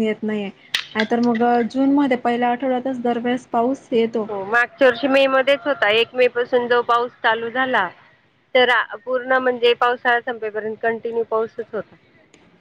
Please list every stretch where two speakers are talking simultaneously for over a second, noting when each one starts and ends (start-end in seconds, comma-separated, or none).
none